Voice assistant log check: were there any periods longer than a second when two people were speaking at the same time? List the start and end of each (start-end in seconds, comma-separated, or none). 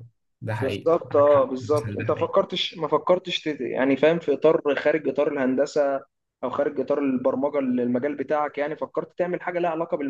0.6-2.3